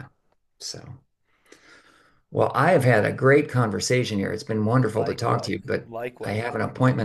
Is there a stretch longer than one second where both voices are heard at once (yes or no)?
yes